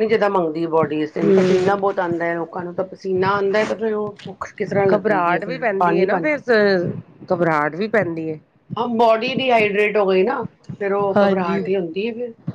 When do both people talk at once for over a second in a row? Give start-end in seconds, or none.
4.9-6.3